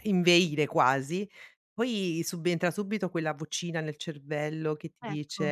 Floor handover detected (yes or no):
no